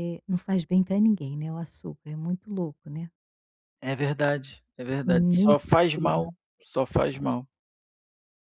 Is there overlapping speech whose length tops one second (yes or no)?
yes